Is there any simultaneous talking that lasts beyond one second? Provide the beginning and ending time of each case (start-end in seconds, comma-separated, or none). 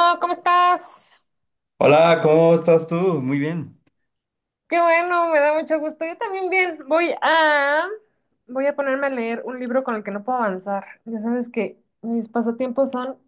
none